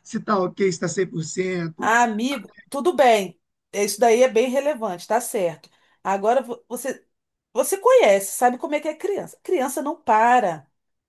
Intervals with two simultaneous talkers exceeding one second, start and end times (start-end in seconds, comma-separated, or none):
none